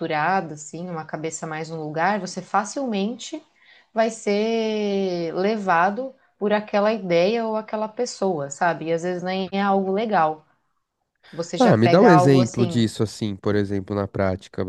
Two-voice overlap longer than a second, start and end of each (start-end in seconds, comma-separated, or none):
11.6-12.9